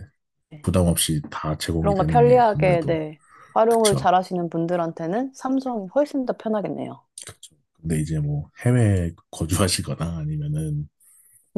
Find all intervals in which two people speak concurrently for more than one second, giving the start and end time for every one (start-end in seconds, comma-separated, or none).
1.8-3.0